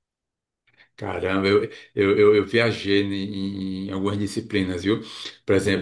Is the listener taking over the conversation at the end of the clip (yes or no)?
no